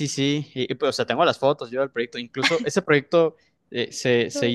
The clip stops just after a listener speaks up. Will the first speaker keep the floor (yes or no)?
yes